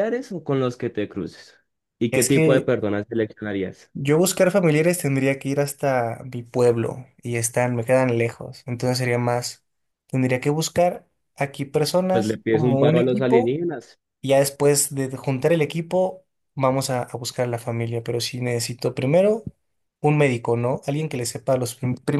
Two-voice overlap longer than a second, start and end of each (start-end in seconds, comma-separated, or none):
12.1-13.6